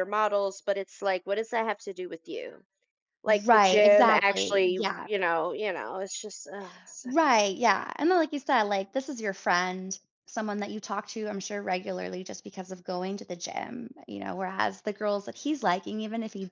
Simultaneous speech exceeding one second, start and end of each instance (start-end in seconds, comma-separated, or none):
3.5-5.1